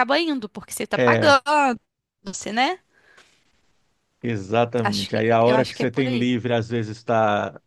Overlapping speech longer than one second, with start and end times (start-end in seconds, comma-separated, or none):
4.8-6.3